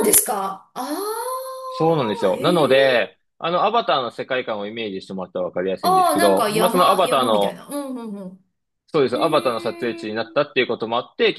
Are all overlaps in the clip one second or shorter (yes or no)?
no